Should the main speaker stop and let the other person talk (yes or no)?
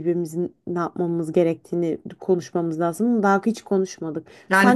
yes